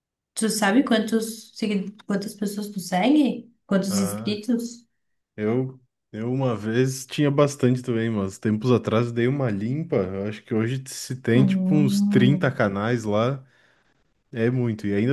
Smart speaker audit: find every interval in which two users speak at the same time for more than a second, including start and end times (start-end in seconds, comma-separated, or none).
11.3-12.6